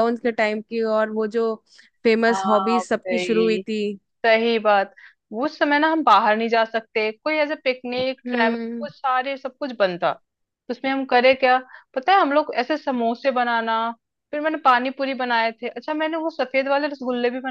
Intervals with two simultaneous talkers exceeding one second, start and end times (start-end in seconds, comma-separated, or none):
2.3-3.6